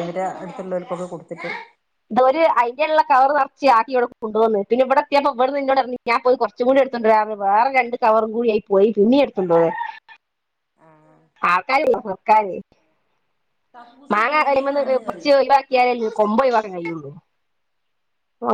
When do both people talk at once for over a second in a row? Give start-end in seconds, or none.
none